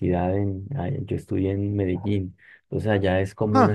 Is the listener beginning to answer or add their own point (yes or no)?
no